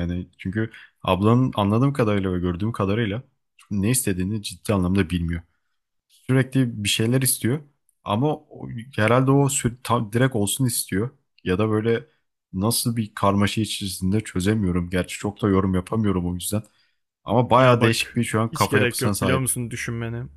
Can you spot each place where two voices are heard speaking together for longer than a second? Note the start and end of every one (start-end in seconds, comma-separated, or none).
17.6-19.5